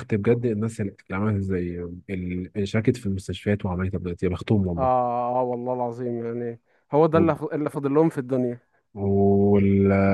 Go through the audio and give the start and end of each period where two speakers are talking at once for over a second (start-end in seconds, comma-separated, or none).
none